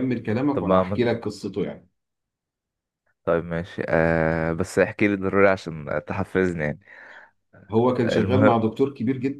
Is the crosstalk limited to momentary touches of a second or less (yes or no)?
yes